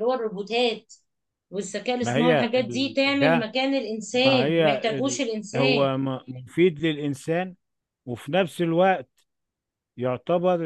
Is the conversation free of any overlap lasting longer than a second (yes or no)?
no